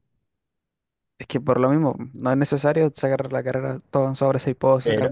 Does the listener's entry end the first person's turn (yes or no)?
yes